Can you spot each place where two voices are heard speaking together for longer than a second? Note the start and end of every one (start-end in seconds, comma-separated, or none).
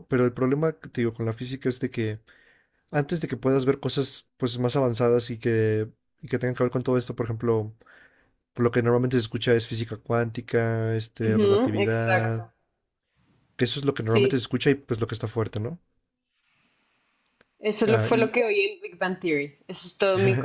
11.2-12.4